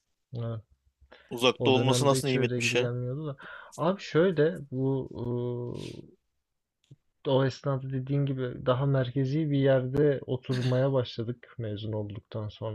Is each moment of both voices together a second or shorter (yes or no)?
no